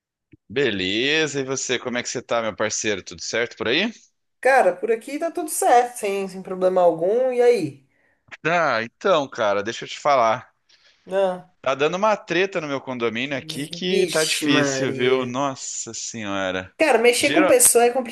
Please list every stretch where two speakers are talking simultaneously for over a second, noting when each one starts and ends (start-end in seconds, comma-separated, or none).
13.9-15.4